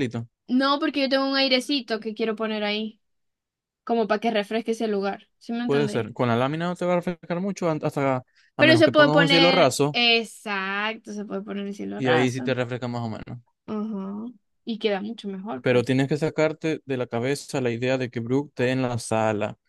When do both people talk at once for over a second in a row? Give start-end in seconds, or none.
8.6-10.0